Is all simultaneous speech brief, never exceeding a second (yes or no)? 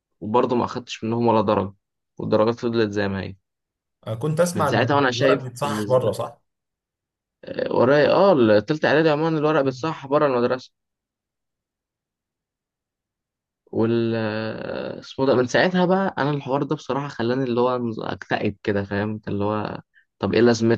no